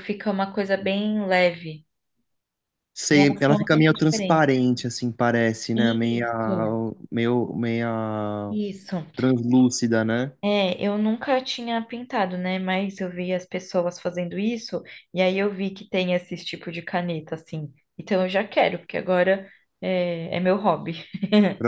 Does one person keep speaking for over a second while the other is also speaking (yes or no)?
yes